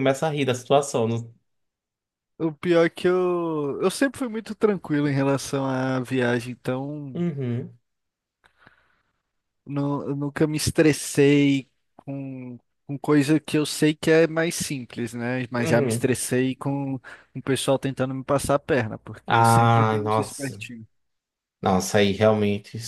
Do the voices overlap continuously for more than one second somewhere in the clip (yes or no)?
yes